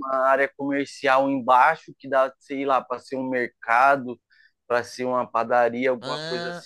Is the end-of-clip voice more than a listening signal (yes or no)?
no